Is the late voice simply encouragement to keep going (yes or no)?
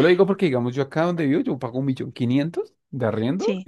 yes